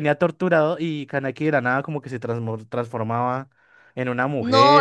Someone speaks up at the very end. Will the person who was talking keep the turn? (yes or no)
no